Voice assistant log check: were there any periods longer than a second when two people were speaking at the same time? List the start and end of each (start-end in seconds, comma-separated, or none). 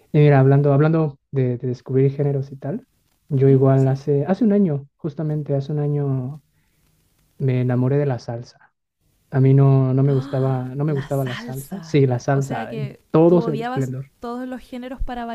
10.1-14.1